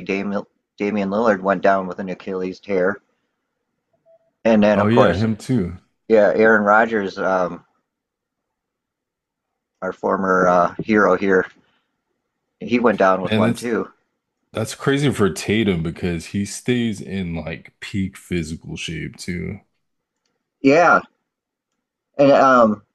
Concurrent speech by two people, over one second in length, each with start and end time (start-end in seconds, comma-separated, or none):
none